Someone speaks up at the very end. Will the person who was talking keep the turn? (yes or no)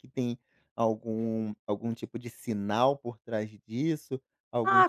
no